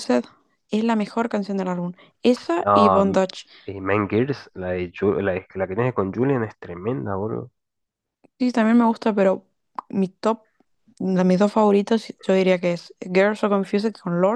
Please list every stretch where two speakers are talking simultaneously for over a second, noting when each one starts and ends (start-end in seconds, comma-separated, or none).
none